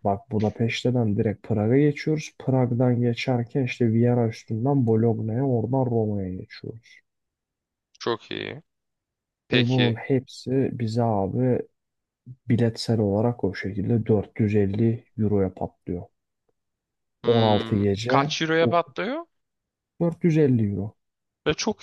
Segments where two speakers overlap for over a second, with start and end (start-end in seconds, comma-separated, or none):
17.2-18.9